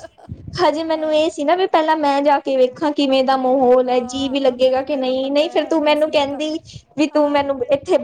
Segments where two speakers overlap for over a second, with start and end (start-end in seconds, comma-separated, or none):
3.3-6.4